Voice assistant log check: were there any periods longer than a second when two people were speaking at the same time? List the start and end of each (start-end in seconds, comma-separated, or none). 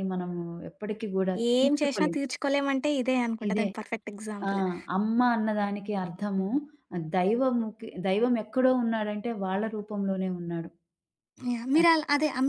none